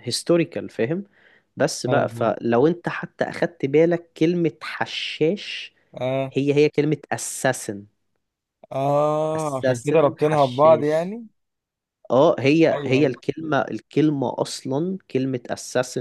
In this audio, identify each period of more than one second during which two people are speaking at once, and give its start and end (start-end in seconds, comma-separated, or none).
9.4-11.1